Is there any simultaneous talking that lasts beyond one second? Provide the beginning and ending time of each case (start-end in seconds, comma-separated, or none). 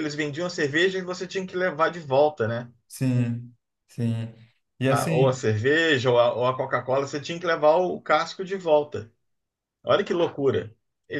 none